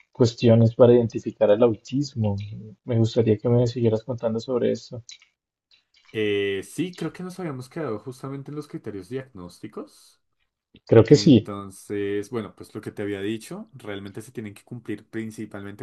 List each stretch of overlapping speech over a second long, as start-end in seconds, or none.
none